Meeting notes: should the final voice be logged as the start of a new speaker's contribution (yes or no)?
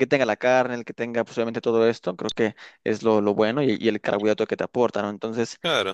no